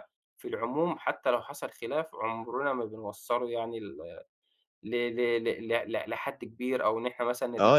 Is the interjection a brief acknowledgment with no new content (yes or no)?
no